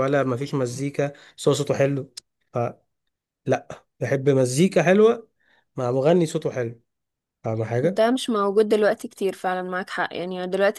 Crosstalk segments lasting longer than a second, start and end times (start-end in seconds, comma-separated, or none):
none